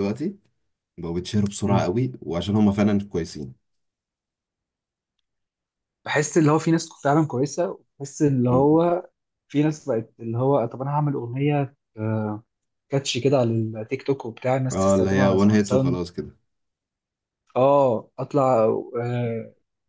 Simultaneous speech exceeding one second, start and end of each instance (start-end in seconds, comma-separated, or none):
14.7-16.0